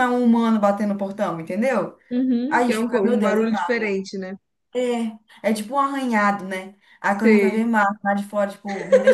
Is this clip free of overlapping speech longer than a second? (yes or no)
no